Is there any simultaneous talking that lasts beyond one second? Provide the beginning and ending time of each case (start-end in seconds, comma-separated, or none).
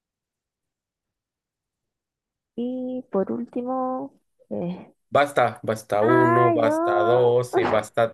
6.0-7.3